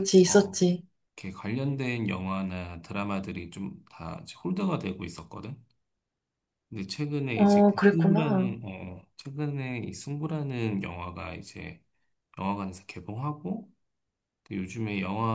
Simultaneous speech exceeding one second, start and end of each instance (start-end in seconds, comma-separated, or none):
7.3-8.5